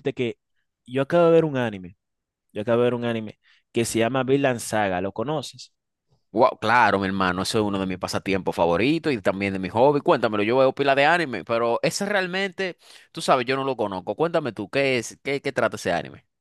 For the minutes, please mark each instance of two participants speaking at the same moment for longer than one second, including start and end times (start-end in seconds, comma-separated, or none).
none